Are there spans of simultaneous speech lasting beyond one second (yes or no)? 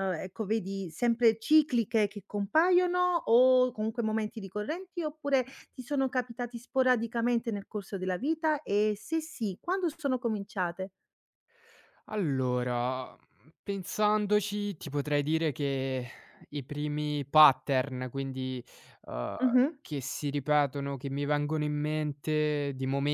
no